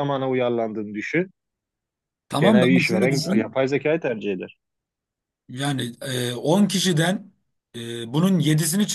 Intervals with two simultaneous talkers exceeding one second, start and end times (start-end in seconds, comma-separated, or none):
2.4-3.6